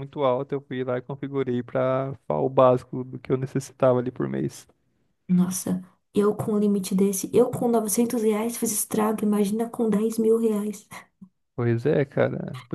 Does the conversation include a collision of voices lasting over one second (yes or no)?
no